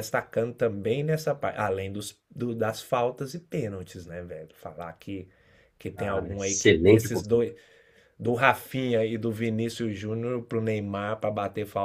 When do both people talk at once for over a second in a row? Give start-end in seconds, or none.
6.0-7.5